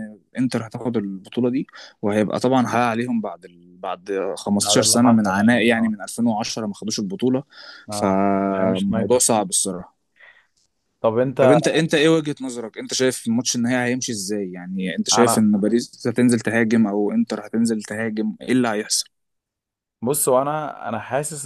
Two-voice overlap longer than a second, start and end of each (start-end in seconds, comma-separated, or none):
4.6-6.0, 7.9-9.3